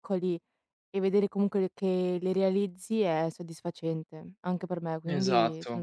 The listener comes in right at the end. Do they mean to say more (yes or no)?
yes